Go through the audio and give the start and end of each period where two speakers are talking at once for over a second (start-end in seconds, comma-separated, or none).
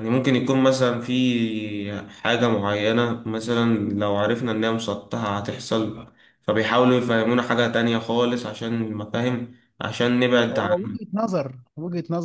none